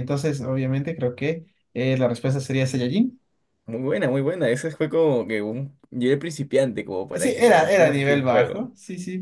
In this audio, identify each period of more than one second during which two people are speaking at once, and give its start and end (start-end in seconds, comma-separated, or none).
7.1-8.7